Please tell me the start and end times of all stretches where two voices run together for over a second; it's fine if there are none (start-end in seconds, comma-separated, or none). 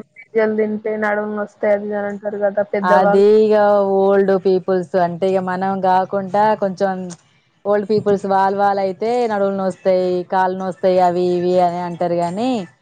none